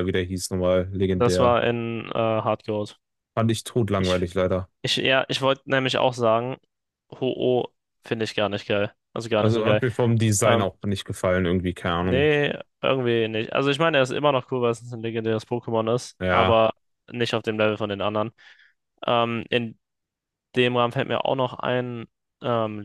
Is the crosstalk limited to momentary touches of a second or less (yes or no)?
yes